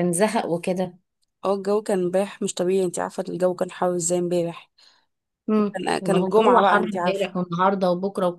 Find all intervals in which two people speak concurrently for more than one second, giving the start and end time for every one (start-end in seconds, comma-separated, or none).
5.7-7.3